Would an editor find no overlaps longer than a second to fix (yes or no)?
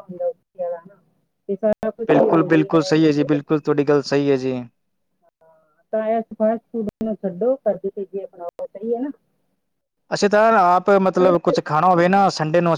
no